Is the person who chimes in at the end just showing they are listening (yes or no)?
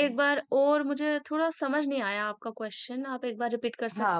no